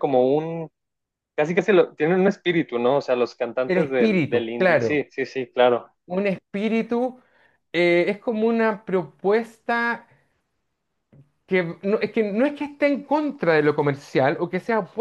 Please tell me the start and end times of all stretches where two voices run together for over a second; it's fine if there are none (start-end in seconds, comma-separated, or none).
3.7-5.0